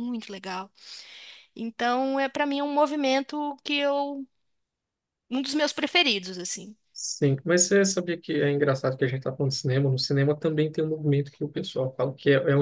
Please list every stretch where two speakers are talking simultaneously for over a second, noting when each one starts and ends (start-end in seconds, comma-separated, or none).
none